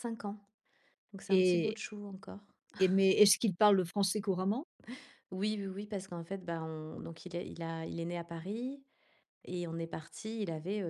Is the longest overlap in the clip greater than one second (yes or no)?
no